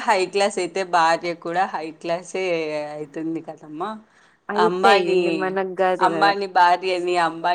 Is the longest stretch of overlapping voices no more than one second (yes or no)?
yes